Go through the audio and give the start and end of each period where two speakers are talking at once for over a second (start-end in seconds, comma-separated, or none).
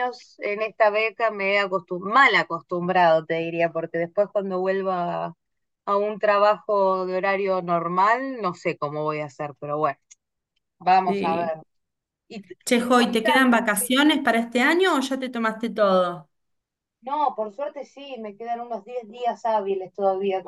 12.6-13.9